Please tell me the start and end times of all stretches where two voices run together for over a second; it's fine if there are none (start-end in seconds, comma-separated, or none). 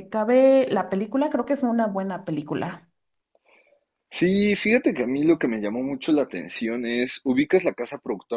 none